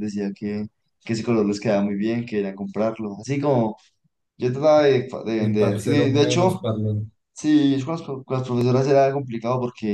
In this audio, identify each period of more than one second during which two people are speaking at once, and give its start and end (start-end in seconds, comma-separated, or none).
5.4-6.6